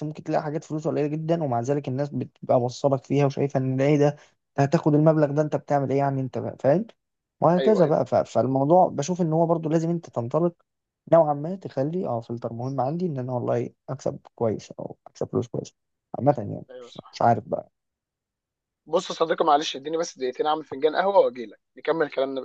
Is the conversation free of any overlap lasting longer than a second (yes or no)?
yes